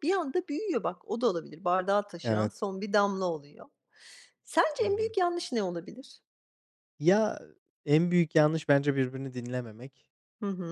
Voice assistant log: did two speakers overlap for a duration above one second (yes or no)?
no